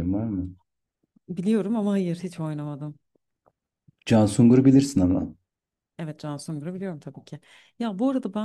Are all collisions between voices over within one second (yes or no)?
yes